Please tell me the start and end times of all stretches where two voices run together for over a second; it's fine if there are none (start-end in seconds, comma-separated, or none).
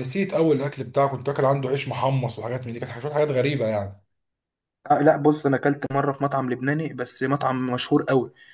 none